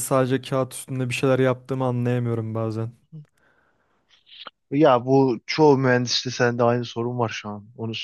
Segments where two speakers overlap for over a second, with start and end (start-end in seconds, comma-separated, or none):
none